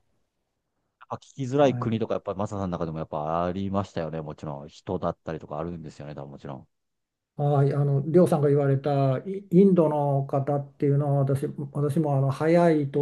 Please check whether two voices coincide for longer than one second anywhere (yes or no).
no